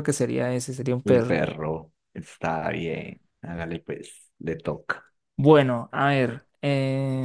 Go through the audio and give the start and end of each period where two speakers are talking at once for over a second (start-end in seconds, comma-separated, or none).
none